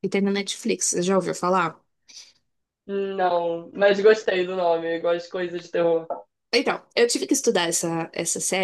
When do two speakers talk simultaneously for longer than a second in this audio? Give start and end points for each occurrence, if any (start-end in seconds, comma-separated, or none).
none